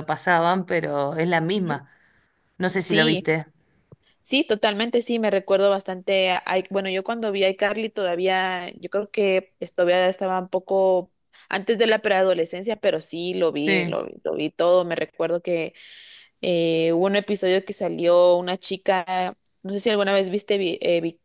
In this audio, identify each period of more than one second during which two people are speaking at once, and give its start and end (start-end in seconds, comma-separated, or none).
none